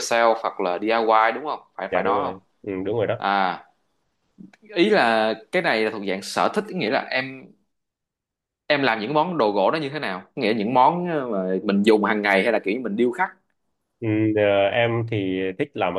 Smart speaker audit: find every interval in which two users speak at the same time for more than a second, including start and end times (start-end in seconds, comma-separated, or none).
none